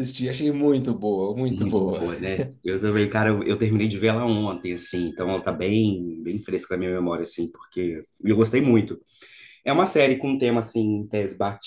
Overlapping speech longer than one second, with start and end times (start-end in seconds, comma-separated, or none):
none